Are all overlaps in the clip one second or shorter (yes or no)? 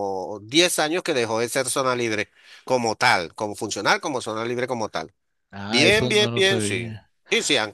no